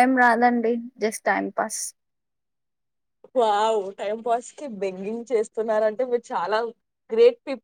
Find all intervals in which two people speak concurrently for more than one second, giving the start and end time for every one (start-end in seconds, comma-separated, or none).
none